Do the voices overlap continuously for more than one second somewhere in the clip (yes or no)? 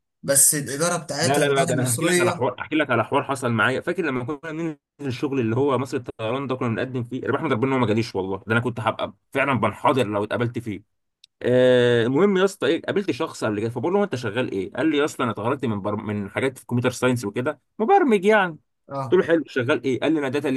yes